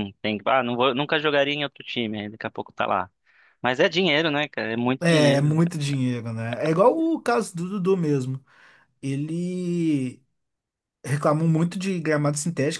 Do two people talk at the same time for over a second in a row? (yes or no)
no